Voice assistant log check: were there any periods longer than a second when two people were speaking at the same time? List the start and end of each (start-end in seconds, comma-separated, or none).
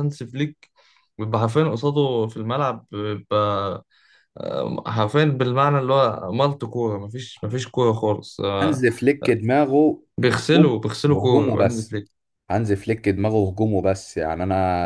10.2-12.0